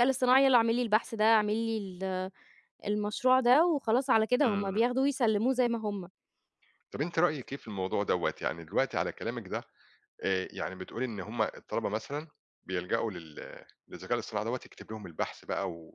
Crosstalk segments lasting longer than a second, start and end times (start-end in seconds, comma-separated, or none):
none